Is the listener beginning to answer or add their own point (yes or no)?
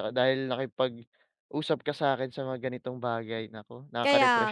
yes